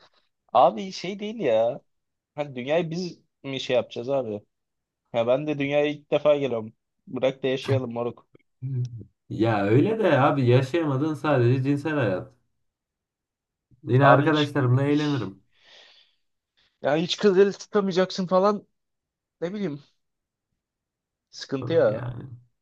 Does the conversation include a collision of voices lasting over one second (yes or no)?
no